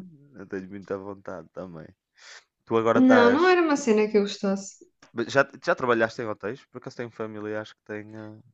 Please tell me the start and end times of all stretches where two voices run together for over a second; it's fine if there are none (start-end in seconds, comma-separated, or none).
none